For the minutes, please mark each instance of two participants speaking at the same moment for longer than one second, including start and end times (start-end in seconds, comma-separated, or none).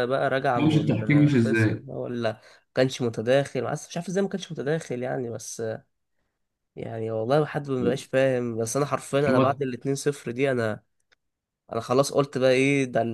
0.5-1.9